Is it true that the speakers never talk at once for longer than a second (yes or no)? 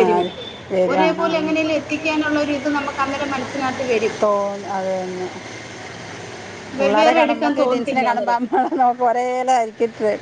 no